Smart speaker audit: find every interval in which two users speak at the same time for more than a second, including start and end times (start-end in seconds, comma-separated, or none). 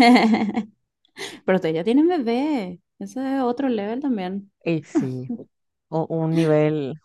none